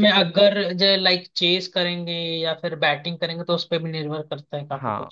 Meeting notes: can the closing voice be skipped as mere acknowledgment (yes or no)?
no